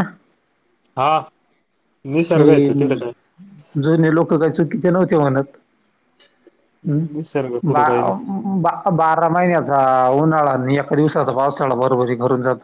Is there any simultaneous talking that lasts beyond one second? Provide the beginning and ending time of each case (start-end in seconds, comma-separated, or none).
6.9-8.1